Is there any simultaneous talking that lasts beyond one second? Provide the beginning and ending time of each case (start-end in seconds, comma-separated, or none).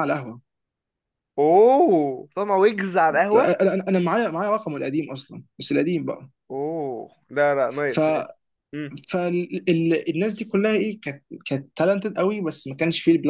none